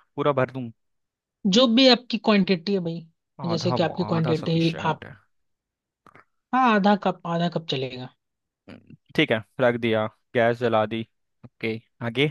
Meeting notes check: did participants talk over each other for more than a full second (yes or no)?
yes